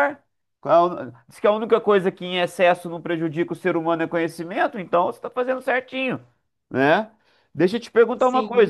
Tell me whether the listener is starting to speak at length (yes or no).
no